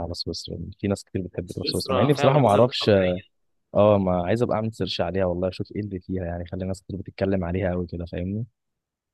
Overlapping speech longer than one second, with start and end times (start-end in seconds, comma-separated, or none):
1.4-2.9